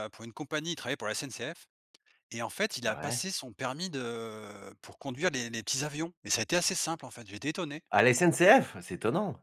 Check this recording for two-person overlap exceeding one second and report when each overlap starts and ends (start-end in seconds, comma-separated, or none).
none